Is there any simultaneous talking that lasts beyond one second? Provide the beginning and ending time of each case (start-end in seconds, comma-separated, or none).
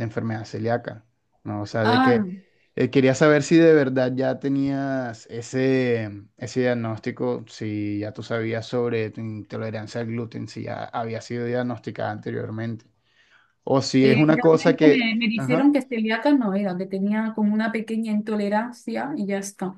14.0-15.7